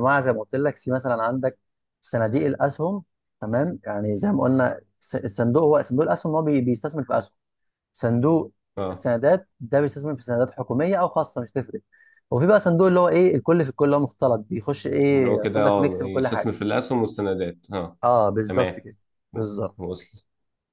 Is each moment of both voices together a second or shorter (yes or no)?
no